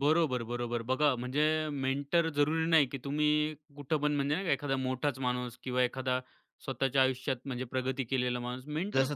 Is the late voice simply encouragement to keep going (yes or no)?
no